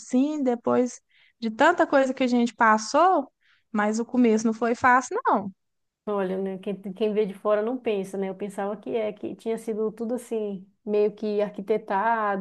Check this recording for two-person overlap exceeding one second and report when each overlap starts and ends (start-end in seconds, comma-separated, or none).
none